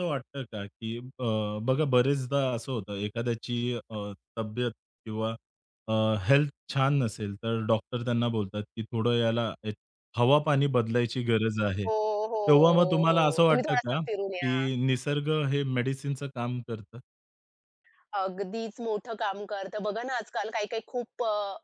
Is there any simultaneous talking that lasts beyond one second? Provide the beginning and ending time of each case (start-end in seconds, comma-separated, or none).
11.9-14.6